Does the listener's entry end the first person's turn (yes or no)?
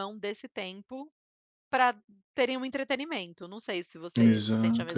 yes